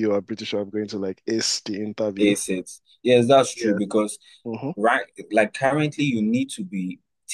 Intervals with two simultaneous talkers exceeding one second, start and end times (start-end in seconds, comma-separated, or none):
none